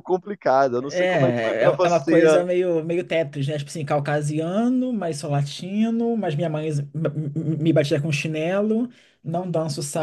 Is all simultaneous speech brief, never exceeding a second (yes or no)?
no